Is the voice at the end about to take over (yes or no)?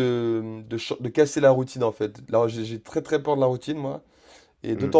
no